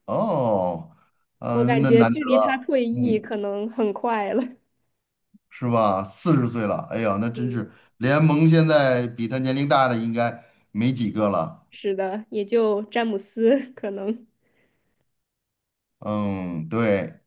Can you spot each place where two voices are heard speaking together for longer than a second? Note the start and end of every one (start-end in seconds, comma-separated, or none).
1.5-3.3